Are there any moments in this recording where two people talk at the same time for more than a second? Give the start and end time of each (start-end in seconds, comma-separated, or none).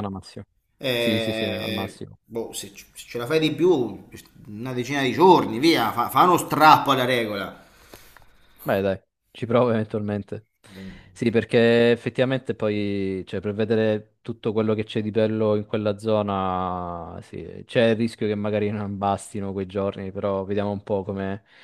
0.9-2.2